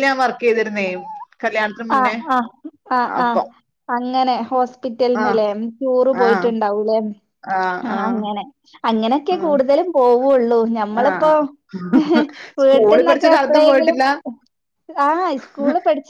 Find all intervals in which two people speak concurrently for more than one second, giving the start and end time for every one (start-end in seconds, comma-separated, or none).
12.6-14.0